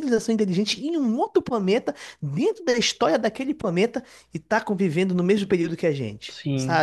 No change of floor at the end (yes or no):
yes